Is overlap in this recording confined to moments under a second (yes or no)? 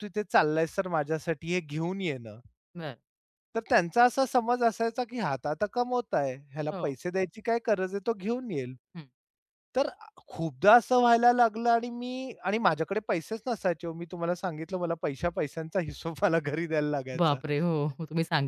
yes